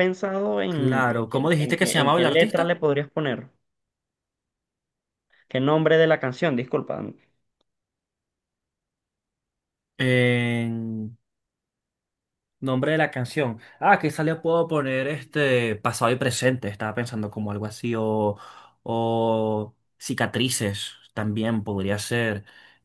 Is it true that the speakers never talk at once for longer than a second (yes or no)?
no